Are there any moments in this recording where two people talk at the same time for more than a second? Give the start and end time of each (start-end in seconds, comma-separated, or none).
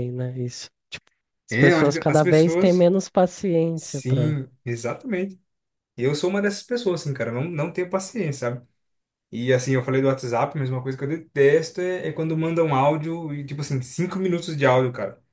1.5-2.9